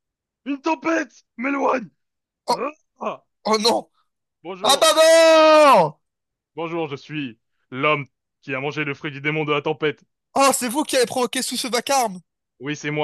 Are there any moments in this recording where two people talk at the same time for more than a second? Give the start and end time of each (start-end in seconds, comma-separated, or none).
none